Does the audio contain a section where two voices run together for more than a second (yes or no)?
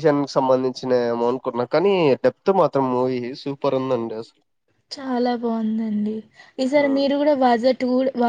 no